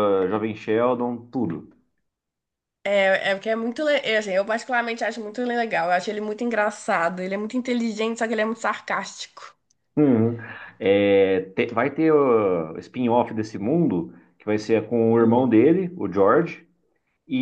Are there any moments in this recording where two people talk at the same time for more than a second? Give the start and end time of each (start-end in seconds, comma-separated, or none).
none